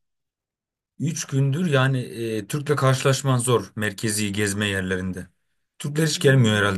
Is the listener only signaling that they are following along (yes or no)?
yes